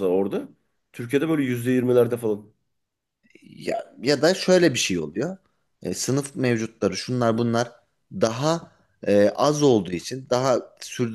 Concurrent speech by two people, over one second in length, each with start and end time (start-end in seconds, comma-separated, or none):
none